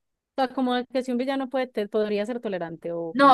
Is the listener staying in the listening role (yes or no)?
no